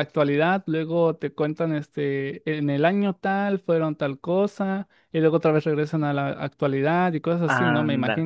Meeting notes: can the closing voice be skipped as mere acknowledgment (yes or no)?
no